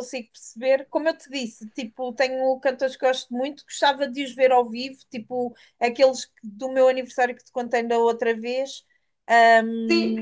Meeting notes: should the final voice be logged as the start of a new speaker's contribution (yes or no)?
no